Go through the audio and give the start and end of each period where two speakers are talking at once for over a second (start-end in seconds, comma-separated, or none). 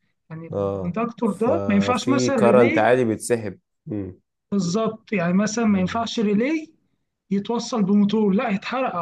0.5-3.0